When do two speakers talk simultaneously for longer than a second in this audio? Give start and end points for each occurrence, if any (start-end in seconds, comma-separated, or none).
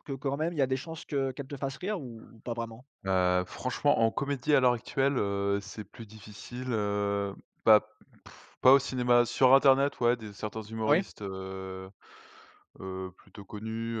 none